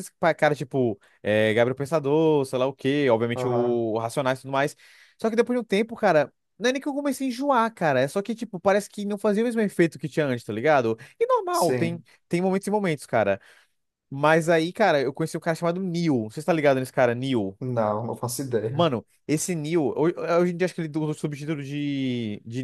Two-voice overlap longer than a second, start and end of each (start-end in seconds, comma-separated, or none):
none